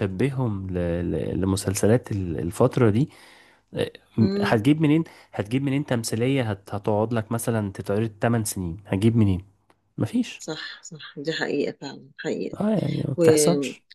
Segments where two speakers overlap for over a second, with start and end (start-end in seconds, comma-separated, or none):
none